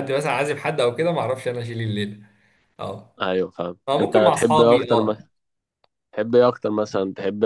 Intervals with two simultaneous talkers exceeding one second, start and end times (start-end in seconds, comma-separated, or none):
3.9-5.2